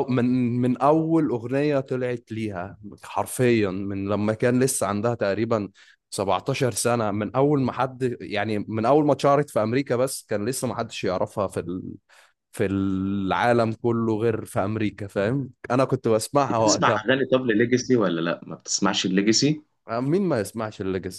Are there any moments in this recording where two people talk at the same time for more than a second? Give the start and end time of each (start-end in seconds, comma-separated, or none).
none